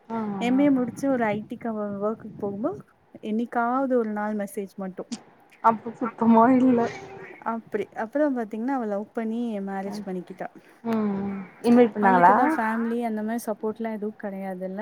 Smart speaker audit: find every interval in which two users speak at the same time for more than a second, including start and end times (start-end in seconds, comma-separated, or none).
none